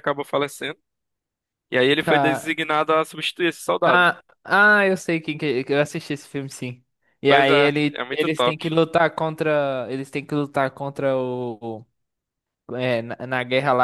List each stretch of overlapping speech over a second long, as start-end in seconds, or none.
7.3-8.6